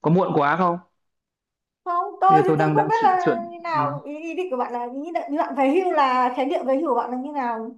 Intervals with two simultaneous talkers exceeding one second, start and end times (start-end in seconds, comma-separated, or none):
2.3-4.0